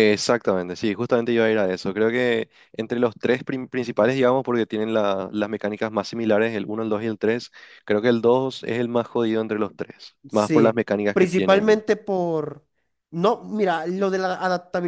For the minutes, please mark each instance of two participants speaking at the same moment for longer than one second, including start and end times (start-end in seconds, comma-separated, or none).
10.3-11.8